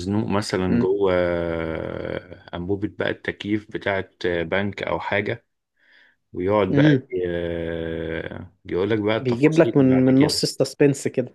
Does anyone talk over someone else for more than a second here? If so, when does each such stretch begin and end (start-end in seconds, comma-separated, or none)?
9.2-10.4